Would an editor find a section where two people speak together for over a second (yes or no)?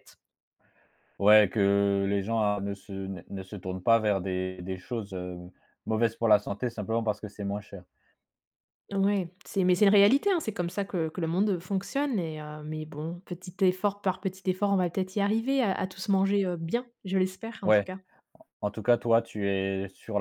no